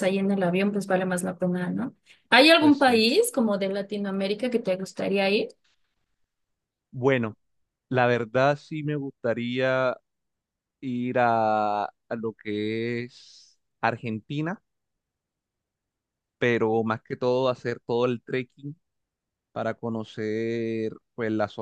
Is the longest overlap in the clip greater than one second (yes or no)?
no